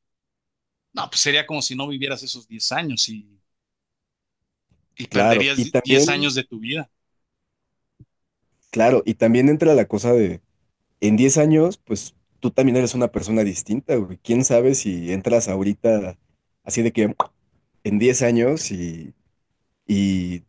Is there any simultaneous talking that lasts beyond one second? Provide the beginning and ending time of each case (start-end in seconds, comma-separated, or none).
5.1-6.3